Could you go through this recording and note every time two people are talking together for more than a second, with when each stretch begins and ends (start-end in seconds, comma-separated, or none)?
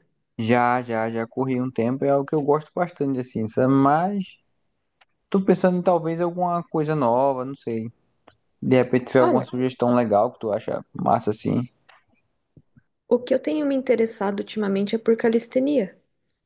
none